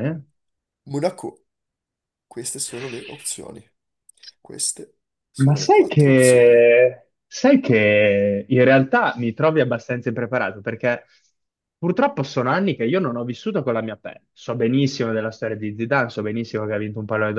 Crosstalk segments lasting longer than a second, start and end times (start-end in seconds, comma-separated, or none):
5.4-6.6